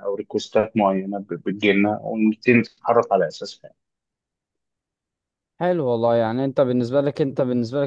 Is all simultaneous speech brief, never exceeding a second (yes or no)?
yes